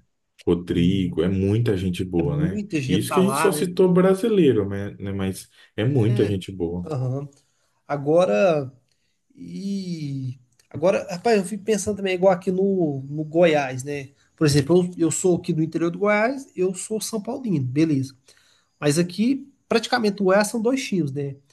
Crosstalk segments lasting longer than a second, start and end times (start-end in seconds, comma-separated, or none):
2.2-3.6